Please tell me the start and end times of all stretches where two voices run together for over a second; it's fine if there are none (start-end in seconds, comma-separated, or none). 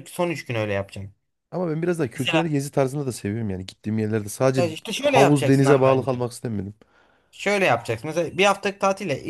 4.6-6.2